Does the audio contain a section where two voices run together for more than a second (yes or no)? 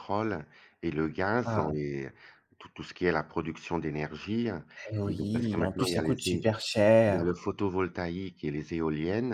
yes